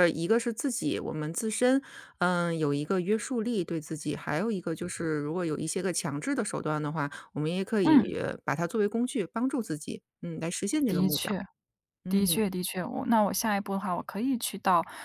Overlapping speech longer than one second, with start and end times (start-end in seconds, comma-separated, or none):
none